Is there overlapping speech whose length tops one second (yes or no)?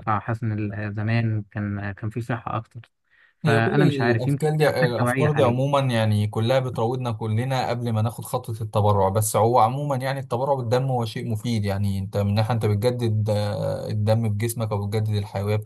yes